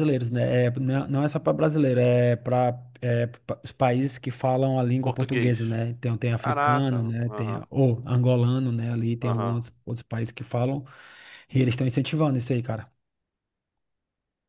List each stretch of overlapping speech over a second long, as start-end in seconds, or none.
6.4-7.6